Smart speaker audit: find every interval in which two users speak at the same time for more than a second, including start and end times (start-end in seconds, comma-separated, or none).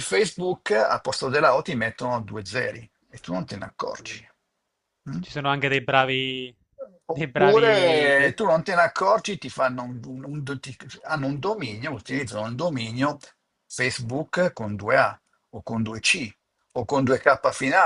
7.1-8.4